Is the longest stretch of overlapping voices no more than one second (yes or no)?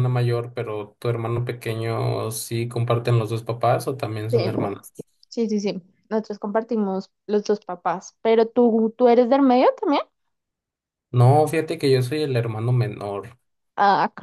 yes